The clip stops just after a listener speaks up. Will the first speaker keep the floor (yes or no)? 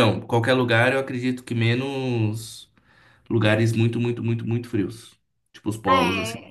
no